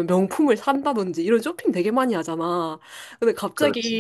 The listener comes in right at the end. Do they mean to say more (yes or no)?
no